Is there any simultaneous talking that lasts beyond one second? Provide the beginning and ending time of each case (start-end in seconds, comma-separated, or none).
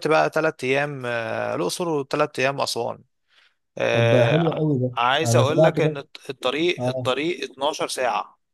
3.9-6.0